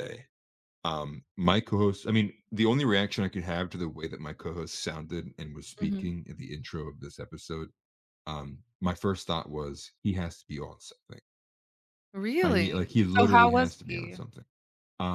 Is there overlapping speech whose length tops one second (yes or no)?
yes